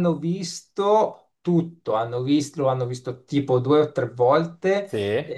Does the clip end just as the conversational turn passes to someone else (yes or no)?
no